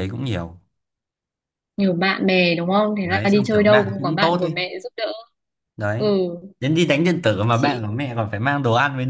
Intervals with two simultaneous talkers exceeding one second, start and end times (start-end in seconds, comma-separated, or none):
3.0-4.5